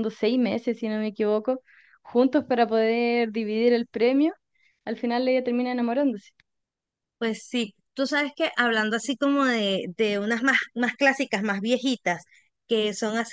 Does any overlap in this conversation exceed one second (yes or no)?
no